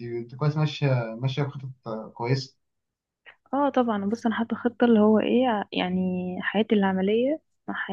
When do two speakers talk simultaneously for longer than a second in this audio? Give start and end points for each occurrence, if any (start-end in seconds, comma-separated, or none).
none